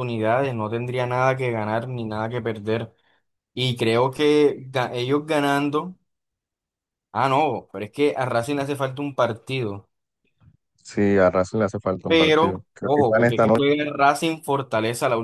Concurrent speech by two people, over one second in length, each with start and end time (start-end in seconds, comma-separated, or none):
12.1-13.7